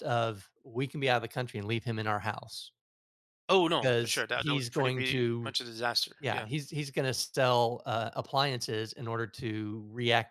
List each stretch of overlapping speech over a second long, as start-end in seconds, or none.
3.8-5.5